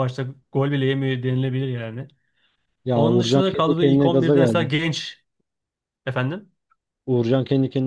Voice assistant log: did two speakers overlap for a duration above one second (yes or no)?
yes